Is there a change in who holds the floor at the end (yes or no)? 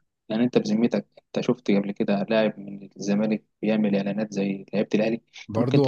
yes